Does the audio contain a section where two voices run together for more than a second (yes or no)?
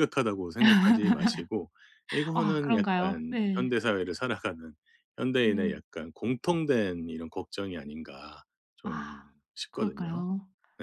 yes